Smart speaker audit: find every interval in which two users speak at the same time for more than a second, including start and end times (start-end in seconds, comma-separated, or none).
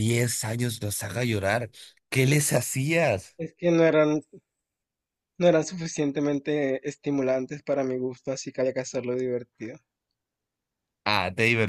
none